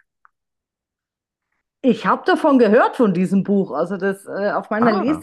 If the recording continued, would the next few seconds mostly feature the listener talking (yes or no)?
no